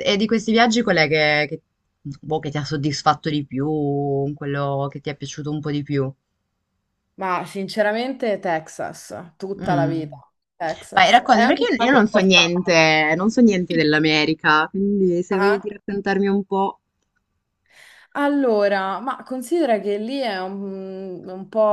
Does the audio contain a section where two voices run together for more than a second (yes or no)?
yes